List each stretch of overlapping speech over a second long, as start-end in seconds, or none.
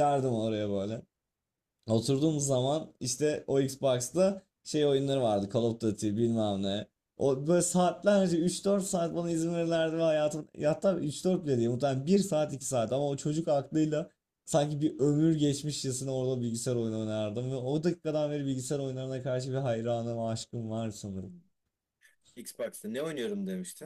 none